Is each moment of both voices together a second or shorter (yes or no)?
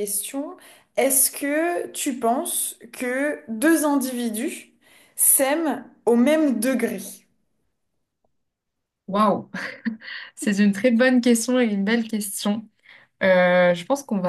yes